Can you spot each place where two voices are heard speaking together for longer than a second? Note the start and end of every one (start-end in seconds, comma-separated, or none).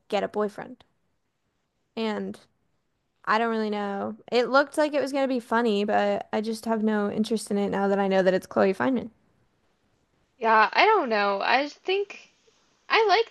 none